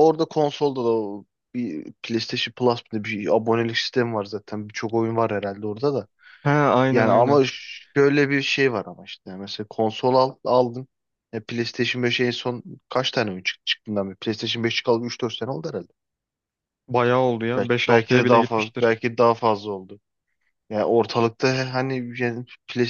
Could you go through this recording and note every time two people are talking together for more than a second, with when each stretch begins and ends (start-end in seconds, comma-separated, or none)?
17.6-18.9